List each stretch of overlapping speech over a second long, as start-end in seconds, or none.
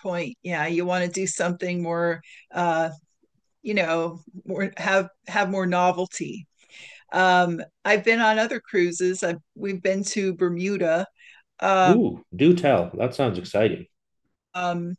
none